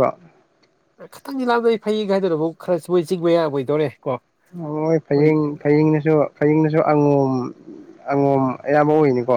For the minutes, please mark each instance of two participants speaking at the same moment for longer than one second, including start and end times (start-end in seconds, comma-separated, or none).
none